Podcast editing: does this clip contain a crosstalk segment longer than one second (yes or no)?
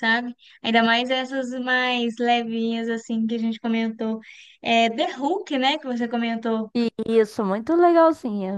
no